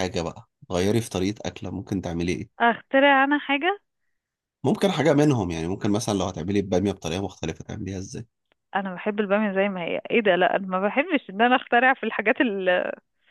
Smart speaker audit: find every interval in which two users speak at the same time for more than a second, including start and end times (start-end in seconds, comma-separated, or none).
none